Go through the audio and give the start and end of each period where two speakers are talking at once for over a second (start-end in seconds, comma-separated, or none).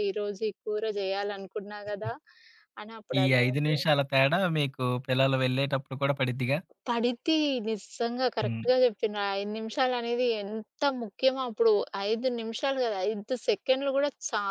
none